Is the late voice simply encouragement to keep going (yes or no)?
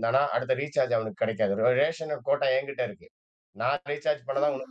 no